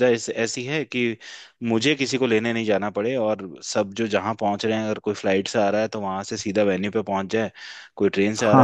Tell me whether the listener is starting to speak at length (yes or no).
yes